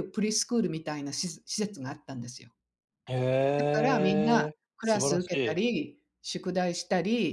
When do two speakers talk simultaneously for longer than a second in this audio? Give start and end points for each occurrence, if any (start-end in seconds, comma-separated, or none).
3.6-5.7